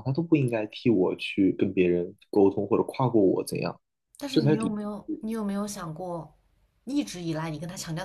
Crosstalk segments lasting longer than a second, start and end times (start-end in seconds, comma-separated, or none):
none